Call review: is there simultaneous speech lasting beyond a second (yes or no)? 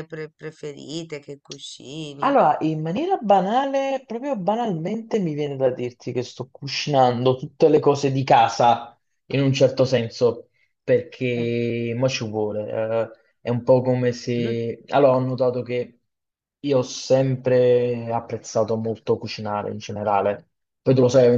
no